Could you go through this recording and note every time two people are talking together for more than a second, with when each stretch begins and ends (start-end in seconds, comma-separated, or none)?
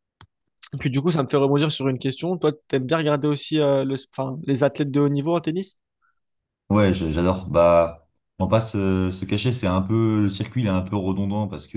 none